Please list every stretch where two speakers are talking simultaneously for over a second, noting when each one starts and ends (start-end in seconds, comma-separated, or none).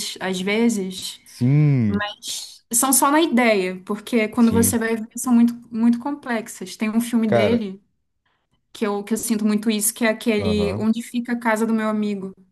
none